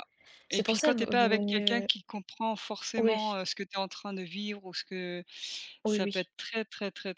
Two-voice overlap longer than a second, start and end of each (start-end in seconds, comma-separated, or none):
0.5-1.9